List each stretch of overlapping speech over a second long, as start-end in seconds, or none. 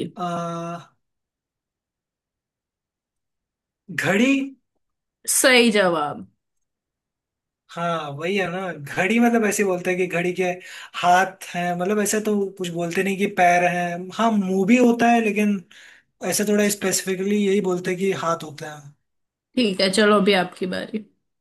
none